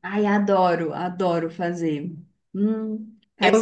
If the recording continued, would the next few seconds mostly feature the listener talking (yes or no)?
yes